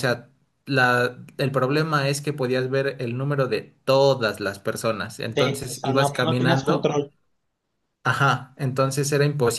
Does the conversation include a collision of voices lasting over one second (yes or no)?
yes